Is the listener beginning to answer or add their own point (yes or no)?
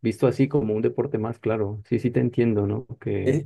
yes